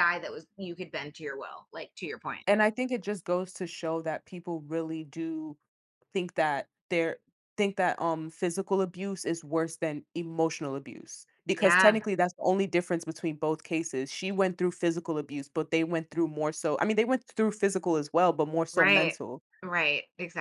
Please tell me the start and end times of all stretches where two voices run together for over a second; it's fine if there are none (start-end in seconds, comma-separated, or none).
none